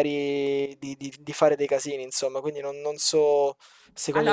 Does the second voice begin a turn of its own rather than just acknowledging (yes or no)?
yes